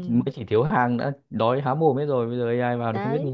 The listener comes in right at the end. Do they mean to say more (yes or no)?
yes